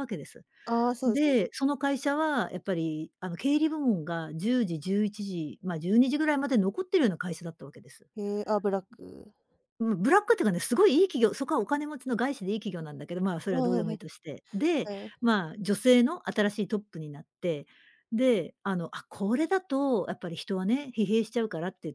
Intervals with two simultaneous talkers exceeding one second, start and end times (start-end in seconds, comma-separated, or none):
none